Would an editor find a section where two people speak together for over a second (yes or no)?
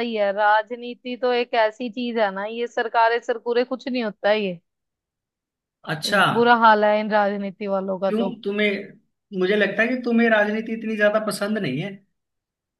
no